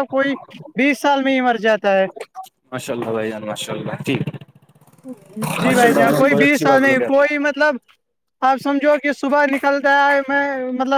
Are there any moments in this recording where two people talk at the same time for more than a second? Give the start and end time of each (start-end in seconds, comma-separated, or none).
5.6-7.3